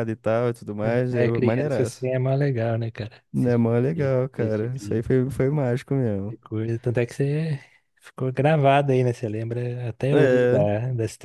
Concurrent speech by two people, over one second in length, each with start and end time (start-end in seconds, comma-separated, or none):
0.8-2.1, 3.3-5.0